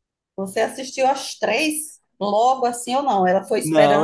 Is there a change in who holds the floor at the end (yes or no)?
yes